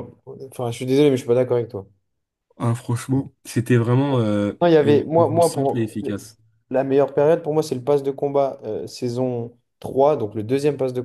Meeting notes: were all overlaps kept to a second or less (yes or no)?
no